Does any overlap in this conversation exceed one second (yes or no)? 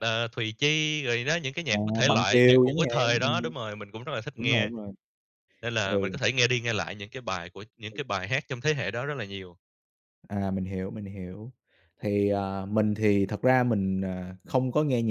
yes